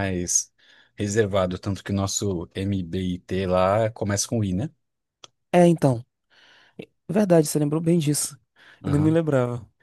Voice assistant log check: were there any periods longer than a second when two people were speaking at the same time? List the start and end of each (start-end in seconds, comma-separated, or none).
none